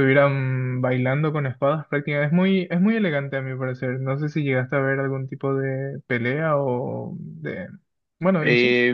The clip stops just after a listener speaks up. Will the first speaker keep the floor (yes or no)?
no